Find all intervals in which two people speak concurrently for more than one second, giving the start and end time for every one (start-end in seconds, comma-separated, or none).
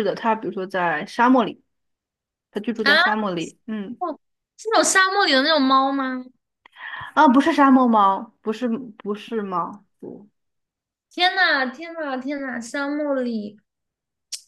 none